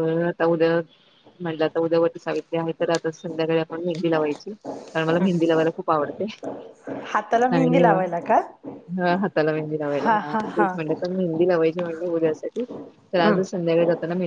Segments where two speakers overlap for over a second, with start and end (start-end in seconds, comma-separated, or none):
none